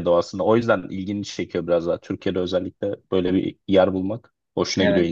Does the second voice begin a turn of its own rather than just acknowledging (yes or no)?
yes